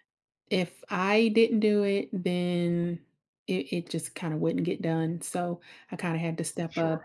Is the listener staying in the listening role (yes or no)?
yes